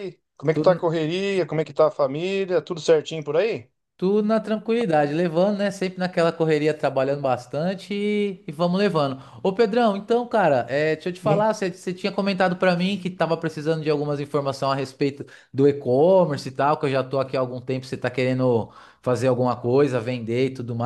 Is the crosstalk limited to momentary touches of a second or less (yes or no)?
yes